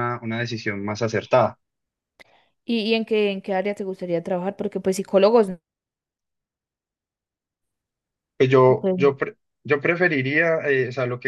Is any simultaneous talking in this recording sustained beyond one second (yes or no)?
no